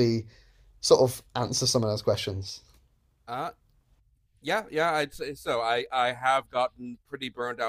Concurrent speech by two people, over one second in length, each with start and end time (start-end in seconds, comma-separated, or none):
none